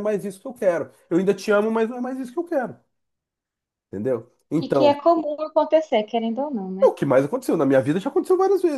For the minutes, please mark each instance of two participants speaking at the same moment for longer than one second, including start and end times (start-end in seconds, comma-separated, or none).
none